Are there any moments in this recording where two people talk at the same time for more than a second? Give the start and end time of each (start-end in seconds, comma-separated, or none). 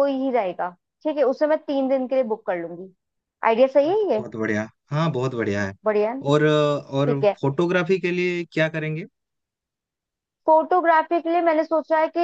none